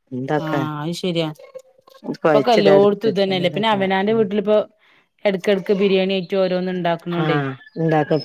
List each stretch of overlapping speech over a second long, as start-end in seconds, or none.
2.3-4.3